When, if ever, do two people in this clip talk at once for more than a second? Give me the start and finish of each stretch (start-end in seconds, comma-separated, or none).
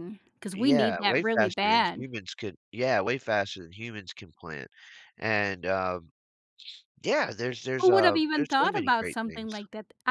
0.5-2.1, 7.8-9.5